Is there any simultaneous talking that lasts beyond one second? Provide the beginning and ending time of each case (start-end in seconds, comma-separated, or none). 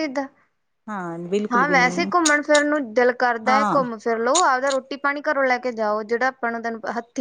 none